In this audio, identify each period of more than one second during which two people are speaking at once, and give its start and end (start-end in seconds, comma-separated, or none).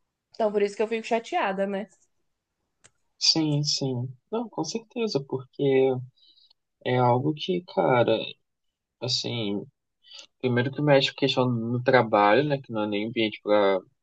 none